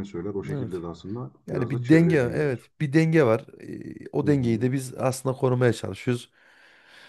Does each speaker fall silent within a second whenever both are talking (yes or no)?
no